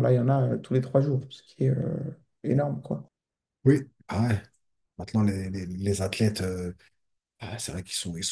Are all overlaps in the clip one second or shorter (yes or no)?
yes